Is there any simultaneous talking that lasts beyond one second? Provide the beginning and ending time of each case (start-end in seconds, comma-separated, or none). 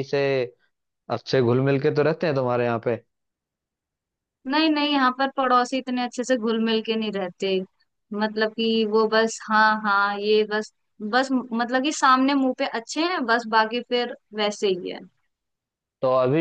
none